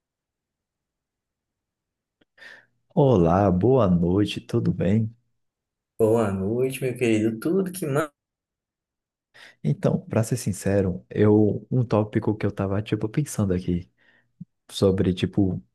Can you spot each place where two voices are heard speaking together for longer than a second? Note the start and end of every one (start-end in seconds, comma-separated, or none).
none